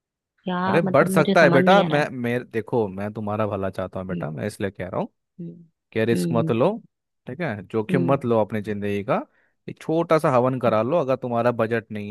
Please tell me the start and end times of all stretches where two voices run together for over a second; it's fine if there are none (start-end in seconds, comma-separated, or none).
0.7-2.1